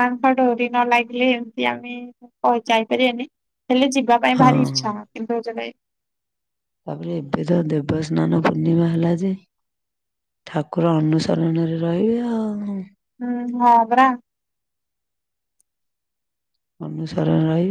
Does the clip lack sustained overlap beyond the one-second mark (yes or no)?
yes